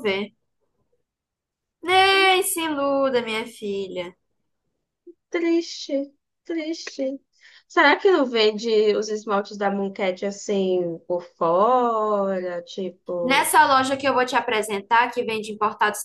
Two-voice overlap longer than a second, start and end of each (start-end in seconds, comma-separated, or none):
none